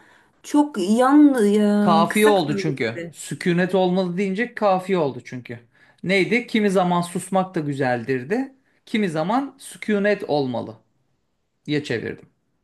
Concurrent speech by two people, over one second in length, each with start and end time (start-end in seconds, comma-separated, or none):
1.8-3.1